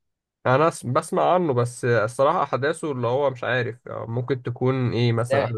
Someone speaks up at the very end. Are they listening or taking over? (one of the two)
taking over